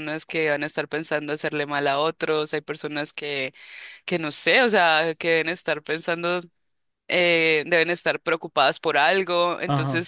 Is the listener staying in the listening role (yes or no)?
yes